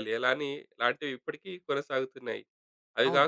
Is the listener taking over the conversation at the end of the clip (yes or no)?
no